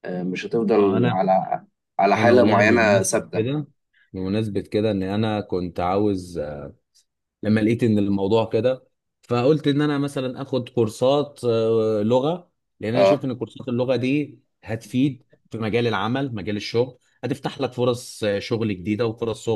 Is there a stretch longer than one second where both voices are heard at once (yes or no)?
yes